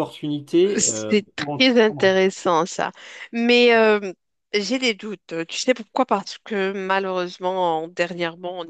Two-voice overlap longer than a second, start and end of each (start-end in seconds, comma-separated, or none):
0.8-2.1